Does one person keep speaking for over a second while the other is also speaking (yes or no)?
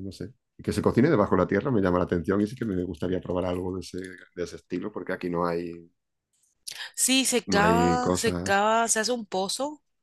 yes